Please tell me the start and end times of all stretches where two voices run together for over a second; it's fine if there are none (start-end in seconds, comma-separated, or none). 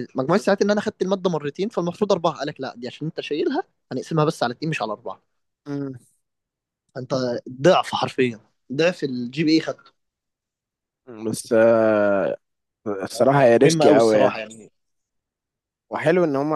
13.1-14.4